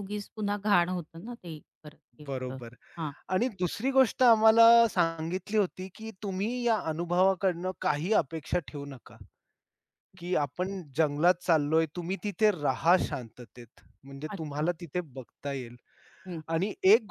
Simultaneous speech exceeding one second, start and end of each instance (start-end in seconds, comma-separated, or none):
none